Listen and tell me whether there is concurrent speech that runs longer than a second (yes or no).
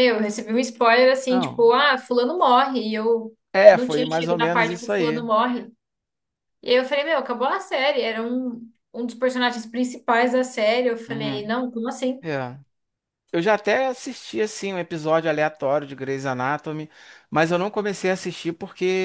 yes